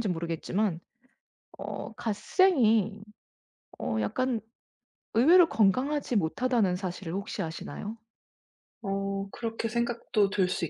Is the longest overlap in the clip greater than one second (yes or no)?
no